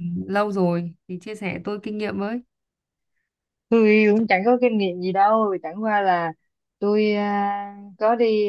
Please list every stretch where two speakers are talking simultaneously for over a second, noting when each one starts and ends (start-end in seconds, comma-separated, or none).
none